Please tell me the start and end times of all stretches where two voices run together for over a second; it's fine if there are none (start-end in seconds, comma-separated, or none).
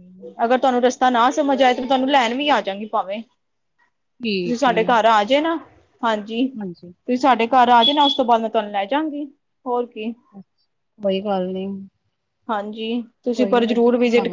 none